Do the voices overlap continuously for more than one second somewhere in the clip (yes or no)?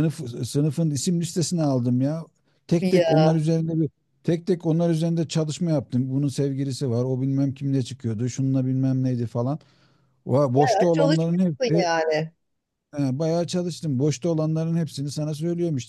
yes